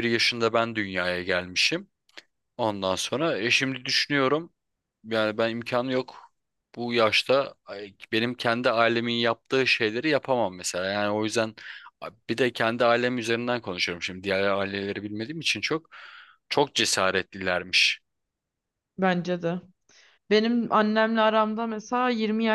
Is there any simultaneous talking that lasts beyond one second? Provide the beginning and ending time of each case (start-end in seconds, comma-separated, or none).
none